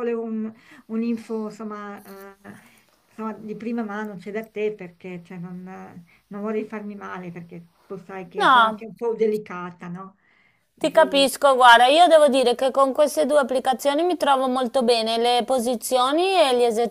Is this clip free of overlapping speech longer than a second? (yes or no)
yes